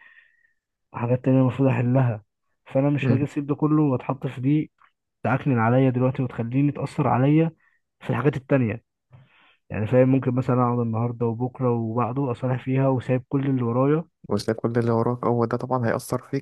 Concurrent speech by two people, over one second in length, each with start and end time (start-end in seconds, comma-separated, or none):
none